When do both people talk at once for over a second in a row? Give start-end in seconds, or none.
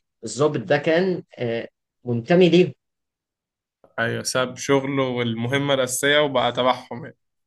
none